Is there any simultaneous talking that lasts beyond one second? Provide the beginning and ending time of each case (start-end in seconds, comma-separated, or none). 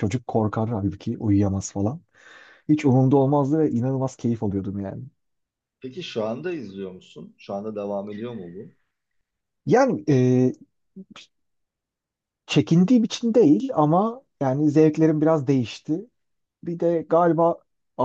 none